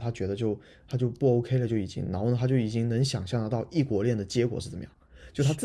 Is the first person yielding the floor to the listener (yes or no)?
no